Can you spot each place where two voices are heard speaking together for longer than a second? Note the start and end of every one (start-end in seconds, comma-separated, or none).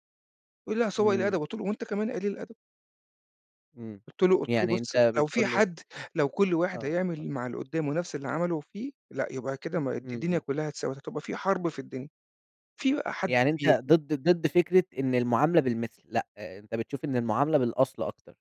4.5-5.7